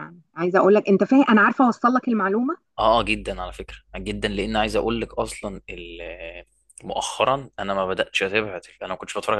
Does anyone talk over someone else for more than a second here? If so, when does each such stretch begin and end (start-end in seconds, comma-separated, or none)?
none